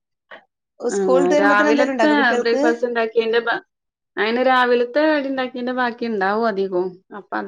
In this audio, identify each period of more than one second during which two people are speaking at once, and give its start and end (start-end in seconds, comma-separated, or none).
1.0-2.6